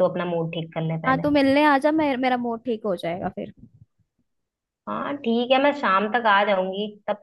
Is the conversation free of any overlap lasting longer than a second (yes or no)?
yes